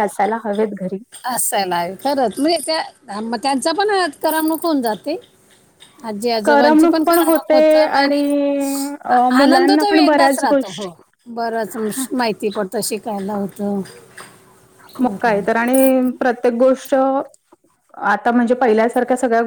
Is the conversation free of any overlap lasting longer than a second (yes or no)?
no